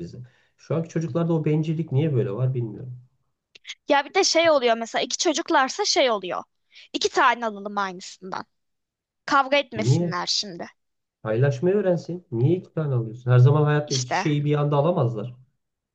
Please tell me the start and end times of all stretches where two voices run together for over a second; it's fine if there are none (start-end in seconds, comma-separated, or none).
none